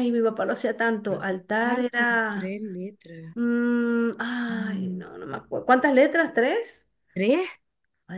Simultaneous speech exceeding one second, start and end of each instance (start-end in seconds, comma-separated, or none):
1.1-2.6